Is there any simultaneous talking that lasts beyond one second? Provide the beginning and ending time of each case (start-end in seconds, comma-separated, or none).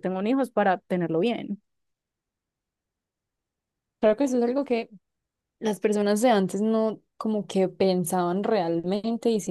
none